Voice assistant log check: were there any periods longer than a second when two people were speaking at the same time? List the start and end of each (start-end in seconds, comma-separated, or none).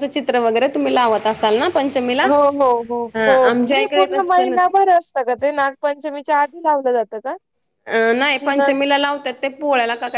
3.1-4.8